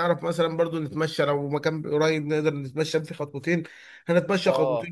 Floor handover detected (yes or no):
no